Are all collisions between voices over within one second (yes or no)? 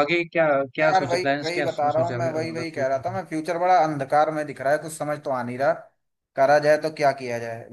no